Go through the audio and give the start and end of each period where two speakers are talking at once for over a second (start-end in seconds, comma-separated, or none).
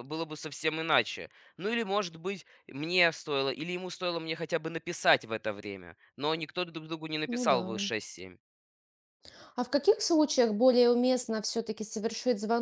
none